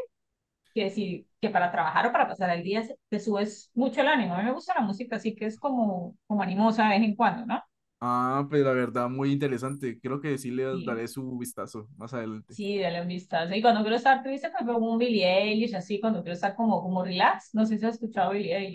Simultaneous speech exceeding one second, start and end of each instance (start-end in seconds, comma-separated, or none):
none